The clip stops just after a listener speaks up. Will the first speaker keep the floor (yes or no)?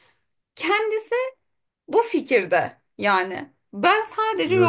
yes